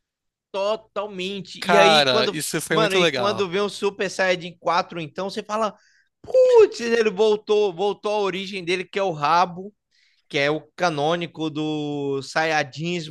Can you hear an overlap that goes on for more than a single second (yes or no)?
yes